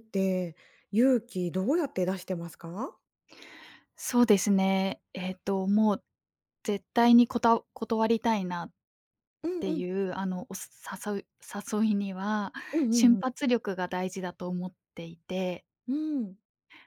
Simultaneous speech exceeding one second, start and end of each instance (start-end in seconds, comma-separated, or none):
none